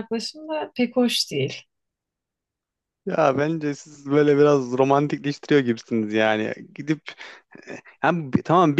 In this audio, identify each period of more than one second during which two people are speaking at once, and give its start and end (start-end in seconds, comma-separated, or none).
none